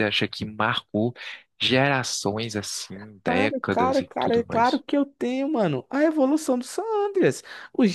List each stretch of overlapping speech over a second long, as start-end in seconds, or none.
3.2-4.8